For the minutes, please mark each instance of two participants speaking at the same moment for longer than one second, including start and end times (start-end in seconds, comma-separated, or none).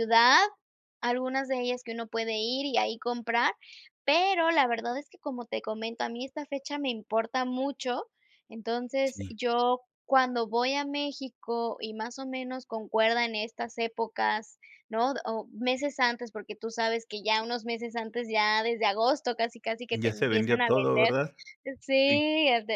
19.9-21.1